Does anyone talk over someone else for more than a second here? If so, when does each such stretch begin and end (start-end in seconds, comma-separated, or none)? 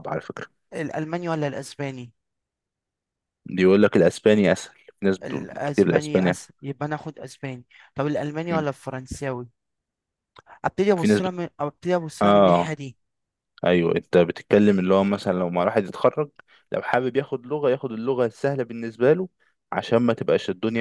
5.2-6.5